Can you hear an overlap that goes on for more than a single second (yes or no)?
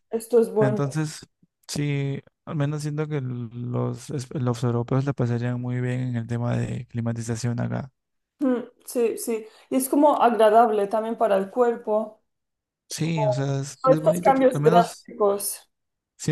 yes